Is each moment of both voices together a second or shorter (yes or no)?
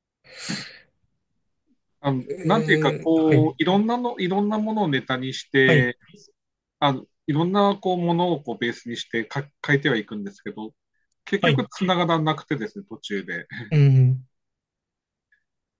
no